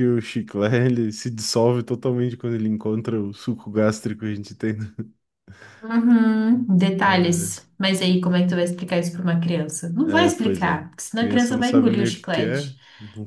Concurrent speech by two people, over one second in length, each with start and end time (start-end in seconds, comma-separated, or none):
10.0-12.7